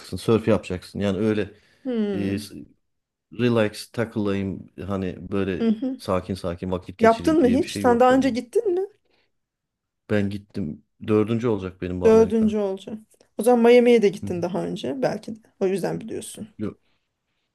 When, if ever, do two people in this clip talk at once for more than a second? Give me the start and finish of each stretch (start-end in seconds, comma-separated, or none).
7.0-8.3